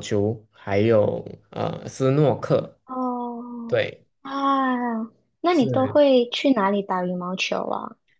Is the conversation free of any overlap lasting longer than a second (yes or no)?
yes